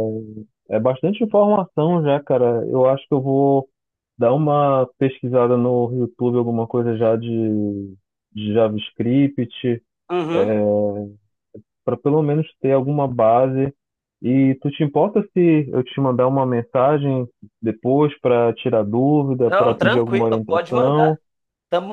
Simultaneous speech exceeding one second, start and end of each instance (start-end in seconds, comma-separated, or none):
19.4-21.1